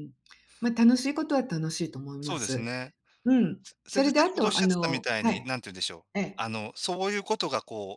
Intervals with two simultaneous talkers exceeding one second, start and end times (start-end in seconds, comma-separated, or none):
3.6-5.5